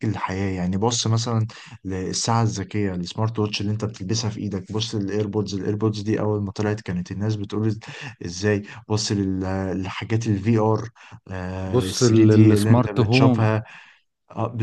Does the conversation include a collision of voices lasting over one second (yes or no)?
yes